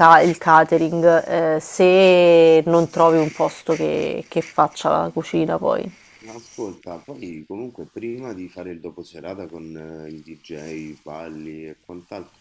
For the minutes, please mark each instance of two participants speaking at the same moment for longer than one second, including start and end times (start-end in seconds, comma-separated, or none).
none